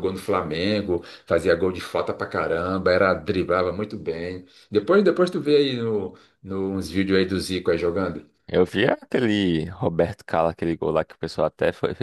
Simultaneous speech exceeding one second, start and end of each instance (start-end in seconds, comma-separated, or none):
none